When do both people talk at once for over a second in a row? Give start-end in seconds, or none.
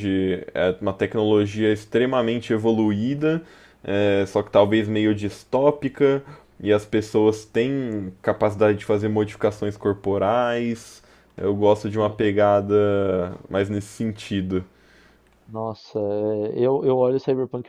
none